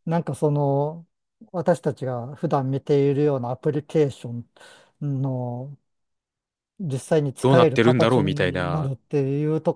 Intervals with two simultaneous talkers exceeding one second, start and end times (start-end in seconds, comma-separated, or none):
7.4-8.9